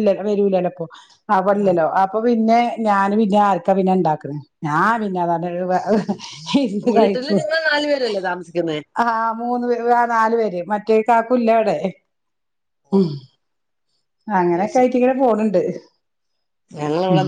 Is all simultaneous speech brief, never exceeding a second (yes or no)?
yes